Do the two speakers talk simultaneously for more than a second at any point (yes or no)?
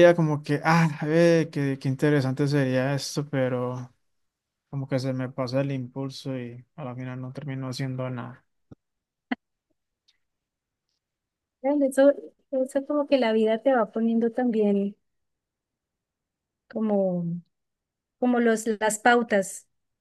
no